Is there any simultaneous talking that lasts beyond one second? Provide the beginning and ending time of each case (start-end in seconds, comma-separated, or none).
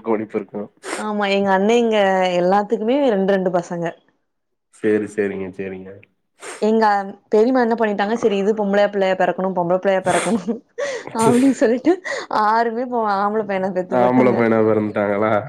none